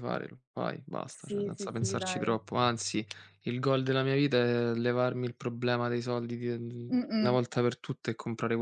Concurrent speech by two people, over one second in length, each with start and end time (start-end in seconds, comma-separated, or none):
1.1-2.3